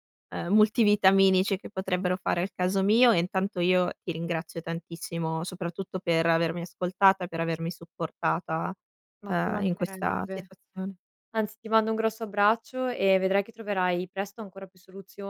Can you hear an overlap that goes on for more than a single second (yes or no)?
yes